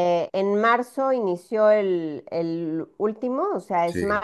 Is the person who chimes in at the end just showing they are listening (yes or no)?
yes